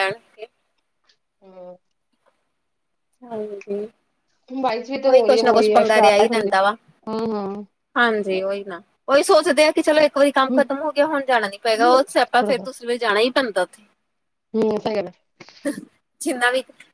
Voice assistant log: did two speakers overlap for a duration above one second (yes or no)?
yes